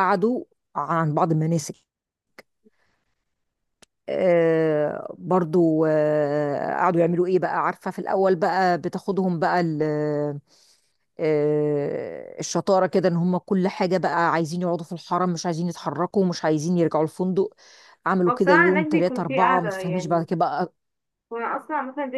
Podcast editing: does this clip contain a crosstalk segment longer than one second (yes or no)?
yes